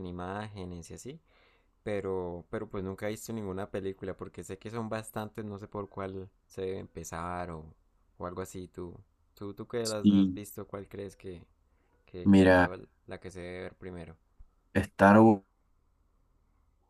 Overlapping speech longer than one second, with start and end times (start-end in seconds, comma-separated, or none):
none